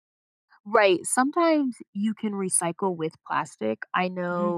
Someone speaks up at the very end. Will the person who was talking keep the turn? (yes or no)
yes